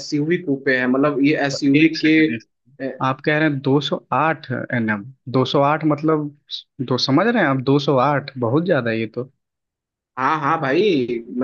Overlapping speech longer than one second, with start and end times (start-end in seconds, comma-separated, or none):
none